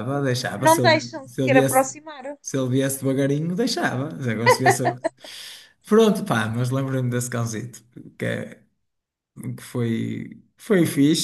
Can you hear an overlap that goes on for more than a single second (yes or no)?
yes